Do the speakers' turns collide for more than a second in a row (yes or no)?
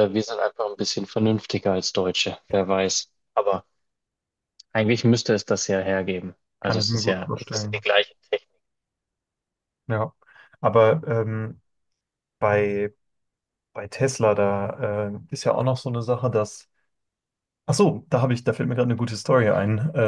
yes